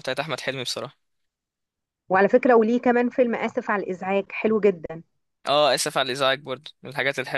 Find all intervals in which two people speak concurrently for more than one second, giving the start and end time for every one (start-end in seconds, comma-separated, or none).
none